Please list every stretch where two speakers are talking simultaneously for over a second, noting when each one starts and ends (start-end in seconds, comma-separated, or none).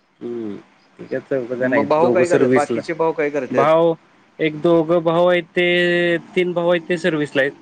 1.6-2.8